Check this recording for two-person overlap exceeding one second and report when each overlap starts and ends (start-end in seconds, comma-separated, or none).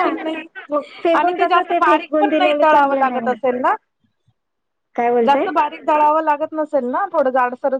1.2-3.2